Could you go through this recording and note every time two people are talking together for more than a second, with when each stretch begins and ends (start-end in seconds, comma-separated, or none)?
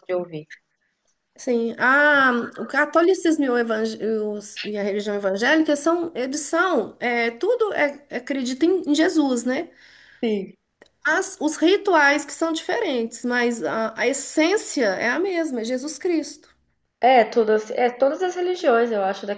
none